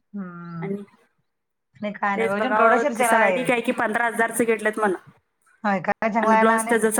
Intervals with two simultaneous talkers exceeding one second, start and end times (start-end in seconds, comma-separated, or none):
2.2-3.5